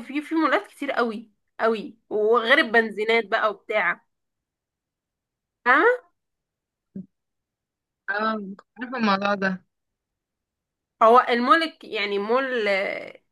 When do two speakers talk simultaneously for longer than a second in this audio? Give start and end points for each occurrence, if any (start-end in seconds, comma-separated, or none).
none